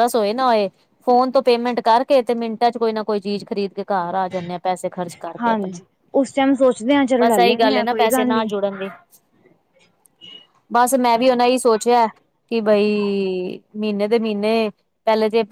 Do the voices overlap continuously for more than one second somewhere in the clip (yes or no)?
yes